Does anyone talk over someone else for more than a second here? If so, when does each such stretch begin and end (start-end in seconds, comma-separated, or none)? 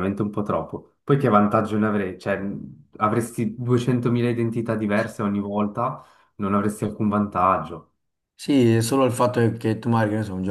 none